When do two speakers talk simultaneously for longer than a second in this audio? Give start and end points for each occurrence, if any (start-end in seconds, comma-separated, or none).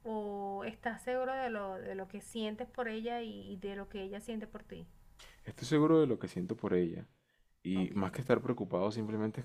none